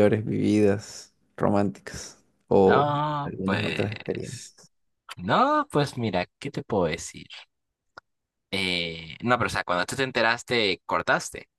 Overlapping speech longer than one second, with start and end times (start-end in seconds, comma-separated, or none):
2.6-4.5